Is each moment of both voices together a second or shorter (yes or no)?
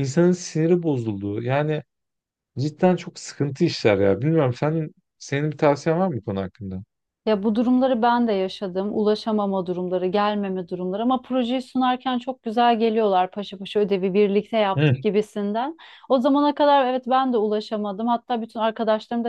yes